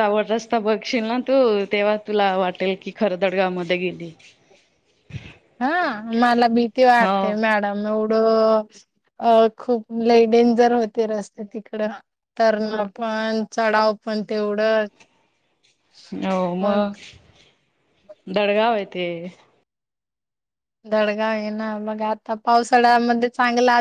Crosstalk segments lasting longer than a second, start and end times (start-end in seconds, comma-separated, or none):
none